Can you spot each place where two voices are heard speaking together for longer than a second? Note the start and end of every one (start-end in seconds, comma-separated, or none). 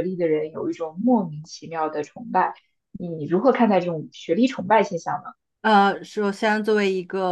none